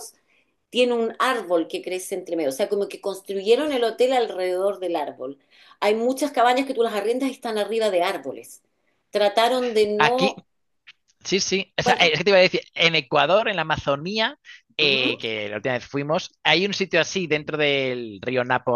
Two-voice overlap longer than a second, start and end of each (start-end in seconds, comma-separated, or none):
none